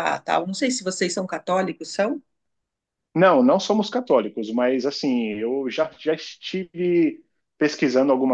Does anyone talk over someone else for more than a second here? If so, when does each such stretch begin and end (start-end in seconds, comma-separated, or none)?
none